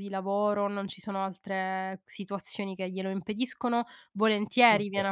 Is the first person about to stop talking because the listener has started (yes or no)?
no